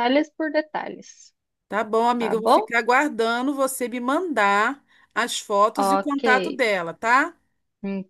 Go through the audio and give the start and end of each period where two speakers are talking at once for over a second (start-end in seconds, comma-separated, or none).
none